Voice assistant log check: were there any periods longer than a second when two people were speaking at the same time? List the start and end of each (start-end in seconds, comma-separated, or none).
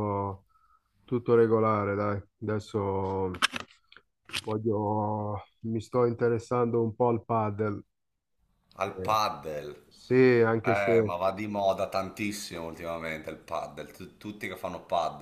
none